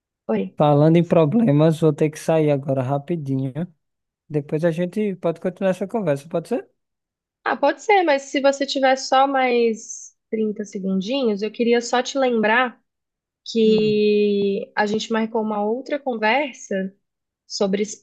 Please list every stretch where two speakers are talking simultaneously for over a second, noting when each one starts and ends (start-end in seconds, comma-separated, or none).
none